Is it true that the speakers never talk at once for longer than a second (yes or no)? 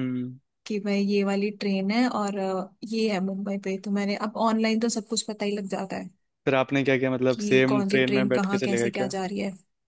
no